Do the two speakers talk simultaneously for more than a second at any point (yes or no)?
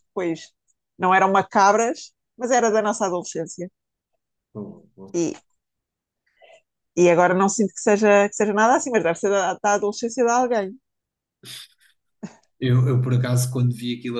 no